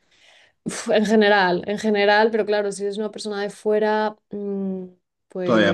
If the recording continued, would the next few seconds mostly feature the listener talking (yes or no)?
no